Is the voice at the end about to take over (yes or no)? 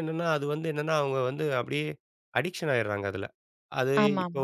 no